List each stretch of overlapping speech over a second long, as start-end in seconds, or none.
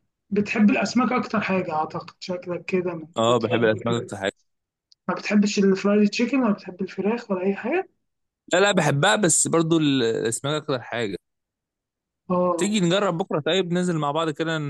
none